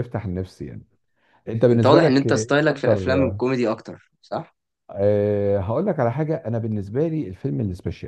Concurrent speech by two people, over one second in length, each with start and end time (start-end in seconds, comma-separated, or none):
1.7-3.0